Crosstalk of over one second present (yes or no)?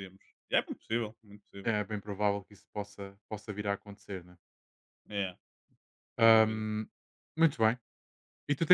no